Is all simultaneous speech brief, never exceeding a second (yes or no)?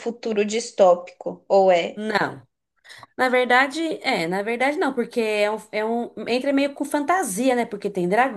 yes